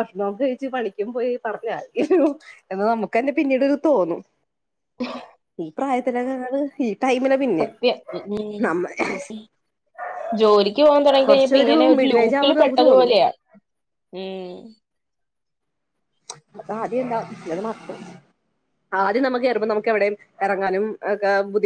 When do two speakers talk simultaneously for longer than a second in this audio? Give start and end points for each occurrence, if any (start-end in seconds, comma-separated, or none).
11.2-13.1